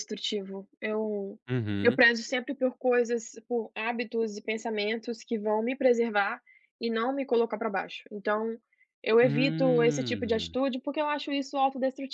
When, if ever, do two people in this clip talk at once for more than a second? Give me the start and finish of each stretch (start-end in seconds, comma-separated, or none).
9.2-10.6